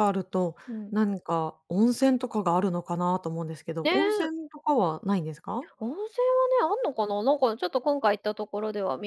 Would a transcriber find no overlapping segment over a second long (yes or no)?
yes